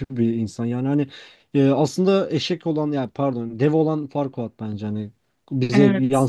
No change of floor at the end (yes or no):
yes